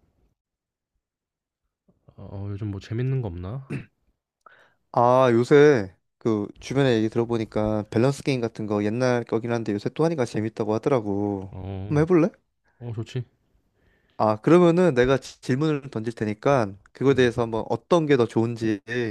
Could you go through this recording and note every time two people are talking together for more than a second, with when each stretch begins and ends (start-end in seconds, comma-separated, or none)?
none